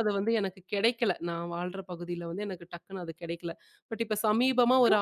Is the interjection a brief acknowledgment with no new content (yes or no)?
yes